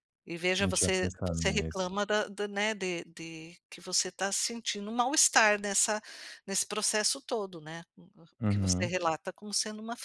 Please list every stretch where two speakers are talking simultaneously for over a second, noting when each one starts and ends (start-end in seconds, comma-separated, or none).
0.6-1.9